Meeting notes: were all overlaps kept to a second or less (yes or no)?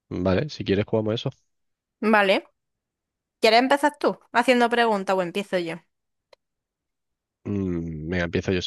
yes